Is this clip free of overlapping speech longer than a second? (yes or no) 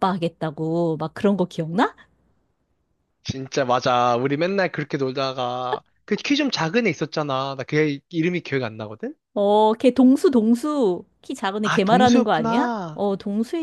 no